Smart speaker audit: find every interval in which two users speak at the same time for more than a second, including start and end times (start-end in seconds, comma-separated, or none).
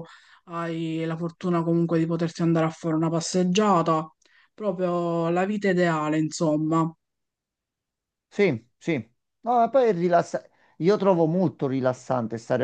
none